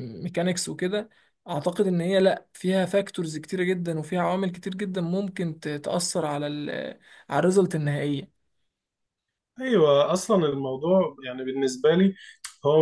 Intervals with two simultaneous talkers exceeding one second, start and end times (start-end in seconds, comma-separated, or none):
none